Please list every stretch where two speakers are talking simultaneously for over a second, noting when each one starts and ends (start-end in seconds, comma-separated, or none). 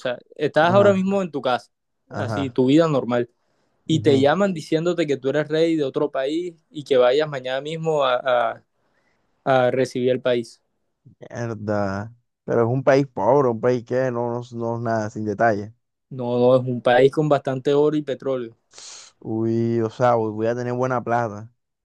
none